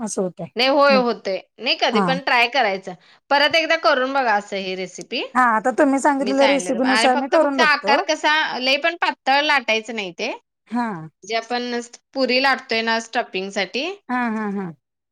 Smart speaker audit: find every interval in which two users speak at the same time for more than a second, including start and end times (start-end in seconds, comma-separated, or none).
6.2-8.0